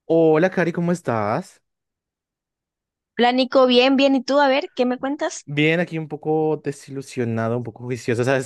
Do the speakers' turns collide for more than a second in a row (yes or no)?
no